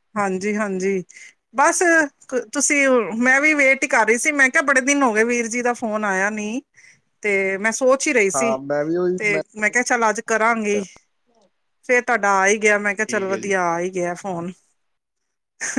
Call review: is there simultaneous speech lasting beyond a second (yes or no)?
no